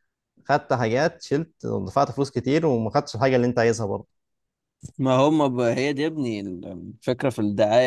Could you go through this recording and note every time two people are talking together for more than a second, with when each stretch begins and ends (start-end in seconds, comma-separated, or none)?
none